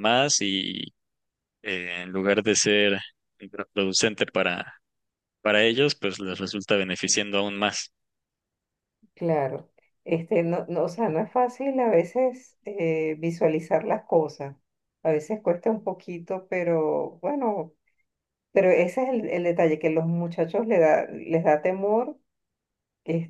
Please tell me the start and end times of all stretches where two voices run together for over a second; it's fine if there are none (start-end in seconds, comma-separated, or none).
none